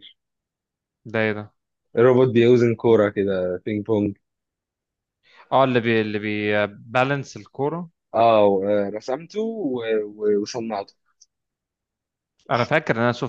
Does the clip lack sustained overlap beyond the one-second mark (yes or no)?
yes